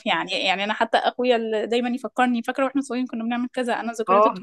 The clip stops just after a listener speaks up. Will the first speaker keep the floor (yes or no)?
yes